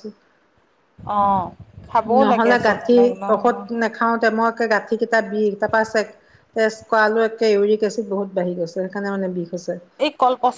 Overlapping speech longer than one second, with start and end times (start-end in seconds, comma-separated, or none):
2.2-3.7